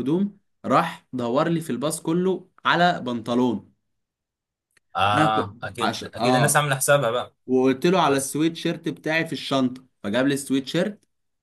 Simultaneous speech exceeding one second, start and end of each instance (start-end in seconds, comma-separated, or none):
5.1-6.6